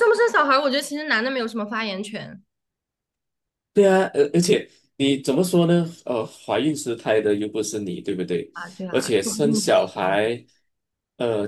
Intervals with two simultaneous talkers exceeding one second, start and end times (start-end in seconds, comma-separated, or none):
8.9-10.3